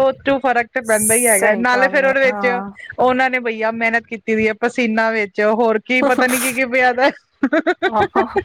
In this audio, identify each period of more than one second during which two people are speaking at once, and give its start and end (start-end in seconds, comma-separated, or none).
0.9-2.6